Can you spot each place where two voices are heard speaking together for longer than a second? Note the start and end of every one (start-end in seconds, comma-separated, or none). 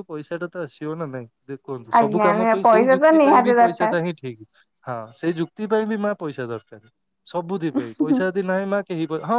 2.0-3.9